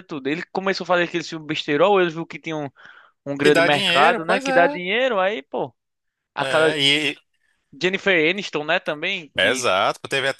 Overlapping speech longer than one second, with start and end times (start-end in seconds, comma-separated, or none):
3.4-4.8